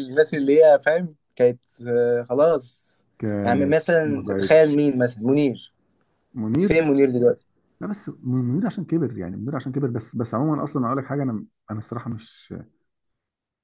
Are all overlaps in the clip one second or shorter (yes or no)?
no